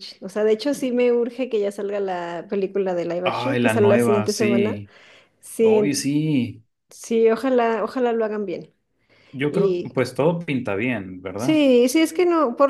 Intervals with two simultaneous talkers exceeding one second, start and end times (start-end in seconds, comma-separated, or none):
3.2-4.8